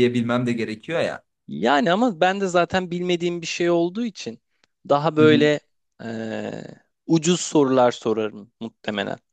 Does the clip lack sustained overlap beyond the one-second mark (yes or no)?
yes